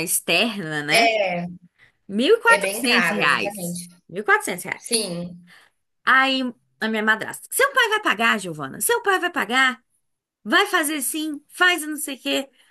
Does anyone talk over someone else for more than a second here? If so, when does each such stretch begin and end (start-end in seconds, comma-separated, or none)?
2.4-3.9